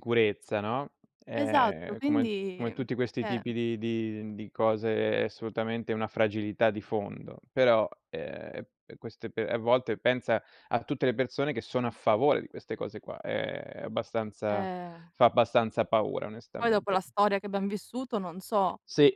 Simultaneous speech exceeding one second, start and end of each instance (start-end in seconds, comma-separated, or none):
1.4-3.5